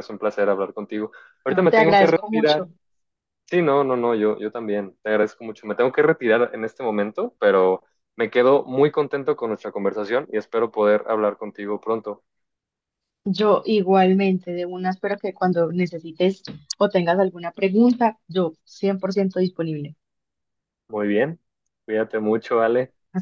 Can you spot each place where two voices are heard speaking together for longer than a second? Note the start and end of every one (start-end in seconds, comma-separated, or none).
1.5-2.7